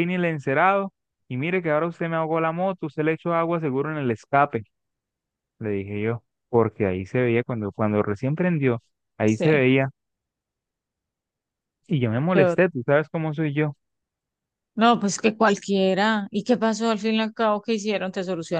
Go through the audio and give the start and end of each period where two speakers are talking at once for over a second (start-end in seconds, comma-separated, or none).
none